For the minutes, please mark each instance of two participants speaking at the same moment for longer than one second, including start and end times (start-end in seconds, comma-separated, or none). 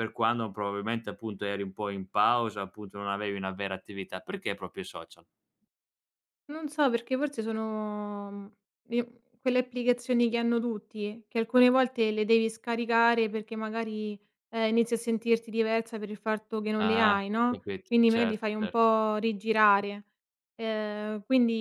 16.8-18.9